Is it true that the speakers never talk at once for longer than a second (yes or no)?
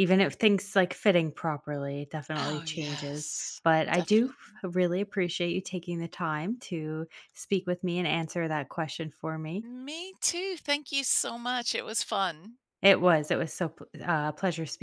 no